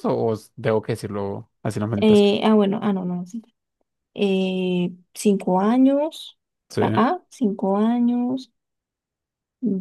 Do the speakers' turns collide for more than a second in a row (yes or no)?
no